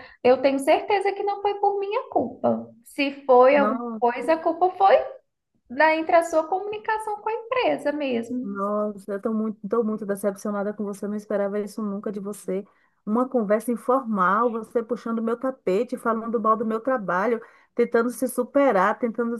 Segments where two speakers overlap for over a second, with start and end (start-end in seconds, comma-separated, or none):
none